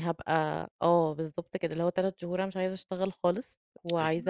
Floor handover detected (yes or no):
no